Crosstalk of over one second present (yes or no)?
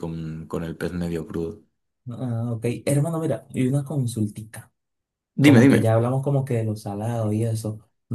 no